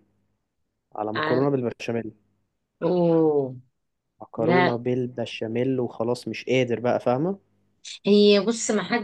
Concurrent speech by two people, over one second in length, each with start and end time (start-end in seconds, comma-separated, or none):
none